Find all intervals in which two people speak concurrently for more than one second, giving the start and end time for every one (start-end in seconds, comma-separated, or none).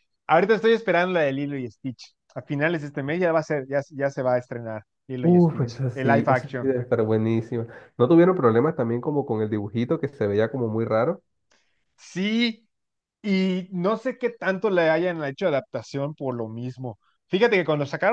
5.2-6.7